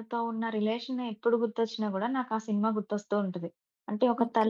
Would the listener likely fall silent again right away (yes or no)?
yes